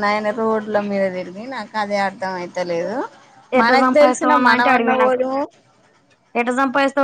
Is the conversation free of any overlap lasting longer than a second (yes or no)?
no